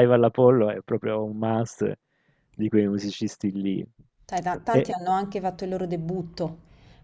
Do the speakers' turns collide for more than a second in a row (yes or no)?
no